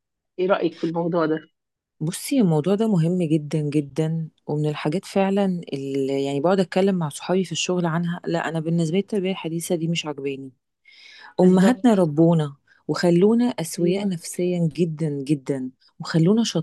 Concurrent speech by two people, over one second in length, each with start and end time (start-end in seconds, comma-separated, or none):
none